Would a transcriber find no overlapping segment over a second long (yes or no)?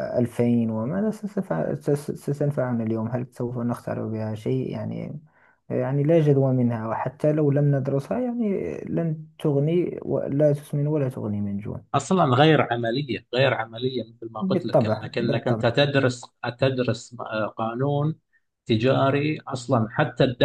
no